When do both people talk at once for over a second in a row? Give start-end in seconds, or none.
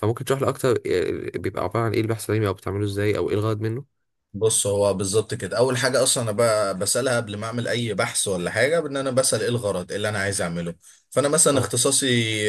none